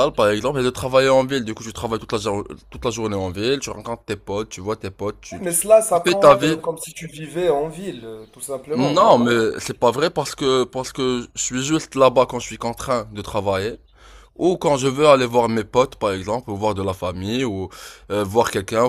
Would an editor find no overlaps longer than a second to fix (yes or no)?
no